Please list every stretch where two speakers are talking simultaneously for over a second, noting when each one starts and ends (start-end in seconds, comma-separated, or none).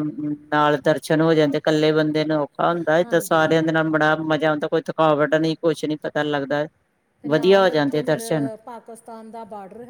none